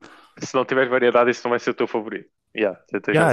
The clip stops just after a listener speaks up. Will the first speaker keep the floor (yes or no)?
no